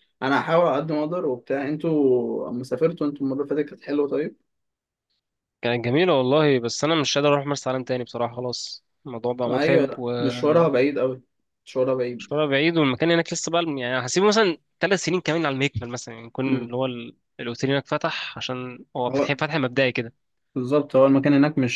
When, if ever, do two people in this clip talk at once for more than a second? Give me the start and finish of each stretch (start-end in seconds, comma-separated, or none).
9.5-10.8